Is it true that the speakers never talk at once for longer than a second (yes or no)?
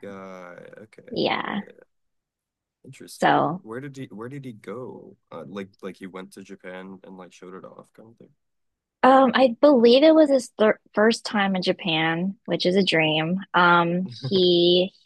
yes